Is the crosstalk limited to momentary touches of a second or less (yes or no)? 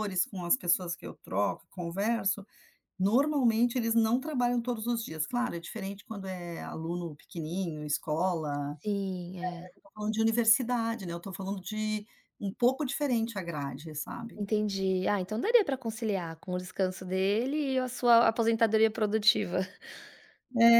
yes